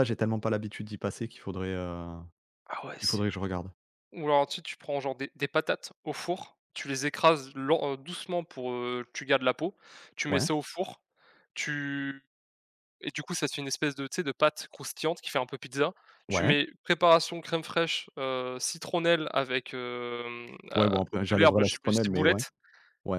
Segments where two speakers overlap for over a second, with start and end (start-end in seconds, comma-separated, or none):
20.8-22.4